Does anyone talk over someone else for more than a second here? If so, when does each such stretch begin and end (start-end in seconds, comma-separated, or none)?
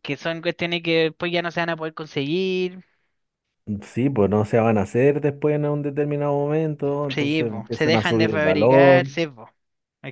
7.1-9.1